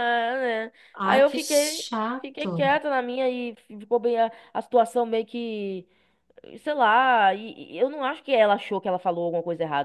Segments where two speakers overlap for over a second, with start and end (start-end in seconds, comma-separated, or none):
0.9-2.7